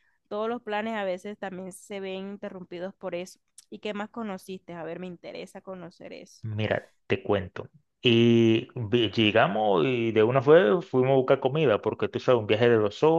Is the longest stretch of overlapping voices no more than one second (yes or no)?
yes